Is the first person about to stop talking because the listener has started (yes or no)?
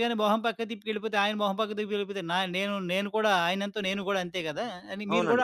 yes